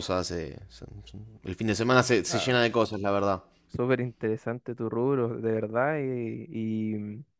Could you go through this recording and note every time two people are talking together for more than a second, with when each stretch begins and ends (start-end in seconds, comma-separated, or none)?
none